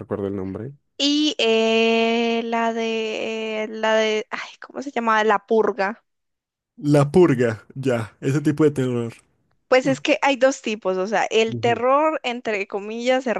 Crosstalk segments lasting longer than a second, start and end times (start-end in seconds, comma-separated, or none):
none